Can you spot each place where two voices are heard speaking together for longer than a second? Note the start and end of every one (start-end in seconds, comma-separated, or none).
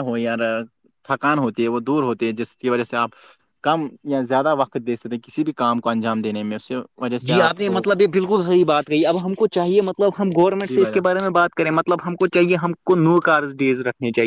none